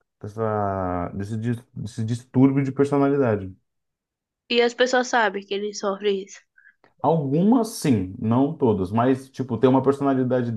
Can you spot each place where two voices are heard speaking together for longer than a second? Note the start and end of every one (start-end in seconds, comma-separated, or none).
none